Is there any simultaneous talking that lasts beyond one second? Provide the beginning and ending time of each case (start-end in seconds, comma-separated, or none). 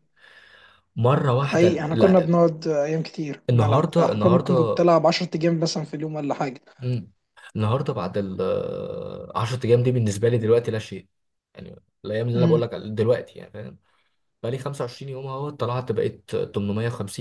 3.5-4.8